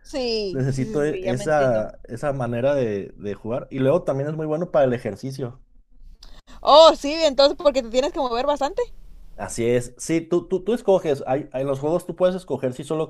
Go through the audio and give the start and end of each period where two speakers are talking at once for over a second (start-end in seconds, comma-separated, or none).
0.5-1.9